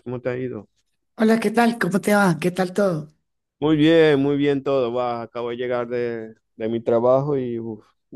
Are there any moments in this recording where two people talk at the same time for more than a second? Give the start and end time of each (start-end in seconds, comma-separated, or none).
none